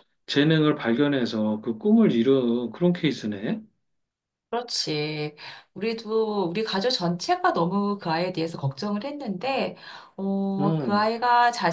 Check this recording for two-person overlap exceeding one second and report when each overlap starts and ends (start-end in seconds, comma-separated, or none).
none